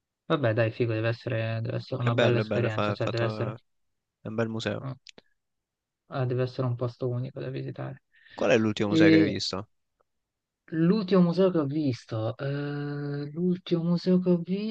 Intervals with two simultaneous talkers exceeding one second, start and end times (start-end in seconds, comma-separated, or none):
1.9-3.5